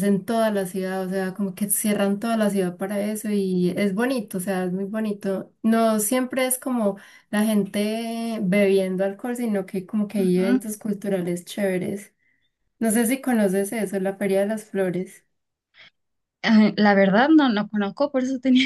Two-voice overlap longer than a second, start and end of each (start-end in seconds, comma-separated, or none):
none